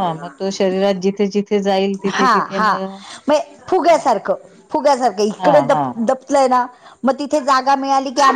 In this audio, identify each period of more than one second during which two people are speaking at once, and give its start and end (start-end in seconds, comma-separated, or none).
none